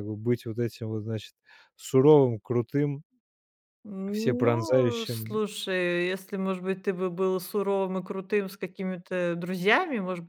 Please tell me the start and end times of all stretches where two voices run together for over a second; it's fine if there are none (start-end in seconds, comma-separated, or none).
4.1-5.4